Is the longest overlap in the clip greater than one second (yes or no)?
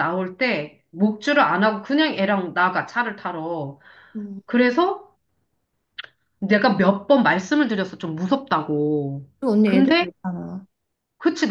no